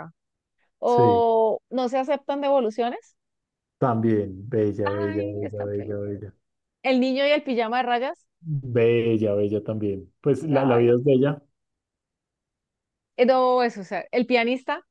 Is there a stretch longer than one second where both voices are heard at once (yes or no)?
yes